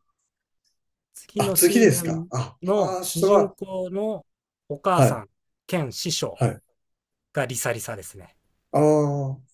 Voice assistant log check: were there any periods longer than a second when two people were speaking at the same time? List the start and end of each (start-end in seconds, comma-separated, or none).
1.4-3.5